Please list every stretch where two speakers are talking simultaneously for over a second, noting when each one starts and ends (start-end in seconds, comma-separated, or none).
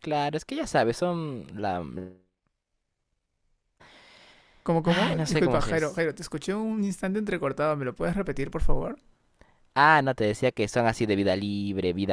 4.8-6.0